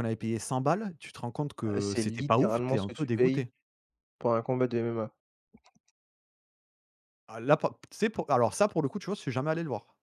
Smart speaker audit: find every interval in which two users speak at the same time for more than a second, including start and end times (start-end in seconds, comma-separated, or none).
1.6-3.5